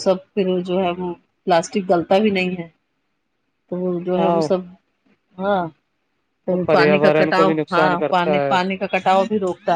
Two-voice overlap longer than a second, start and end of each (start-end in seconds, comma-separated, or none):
6.7-8.6